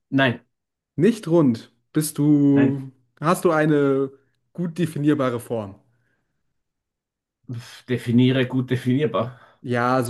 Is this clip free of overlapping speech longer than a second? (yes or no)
yes